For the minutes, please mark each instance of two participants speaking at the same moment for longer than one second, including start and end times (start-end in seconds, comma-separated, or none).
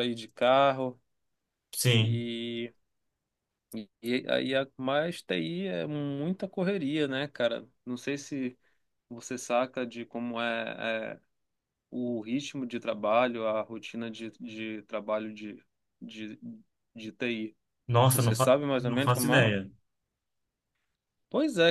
18.1-19.5